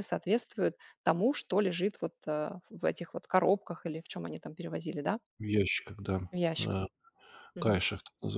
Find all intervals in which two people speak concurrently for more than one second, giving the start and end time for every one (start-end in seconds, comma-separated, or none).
none